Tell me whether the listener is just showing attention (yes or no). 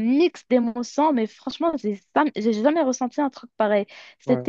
yes